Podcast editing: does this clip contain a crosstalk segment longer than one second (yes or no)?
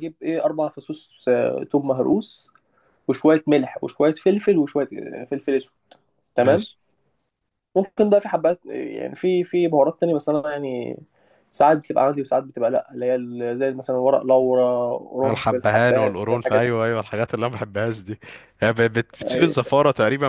yes